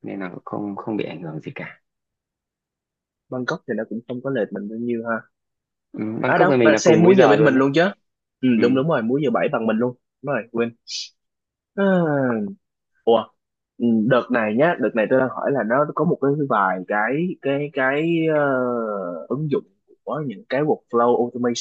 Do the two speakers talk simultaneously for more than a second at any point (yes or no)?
yes